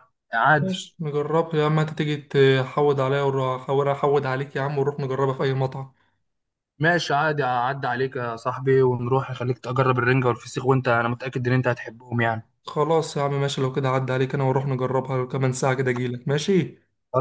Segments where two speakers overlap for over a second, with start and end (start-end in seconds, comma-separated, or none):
none